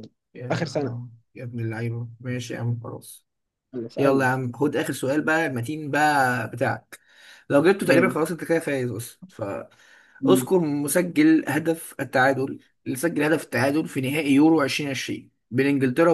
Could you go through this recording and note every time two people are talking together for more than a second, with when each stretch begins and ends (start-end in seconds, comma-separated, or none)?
none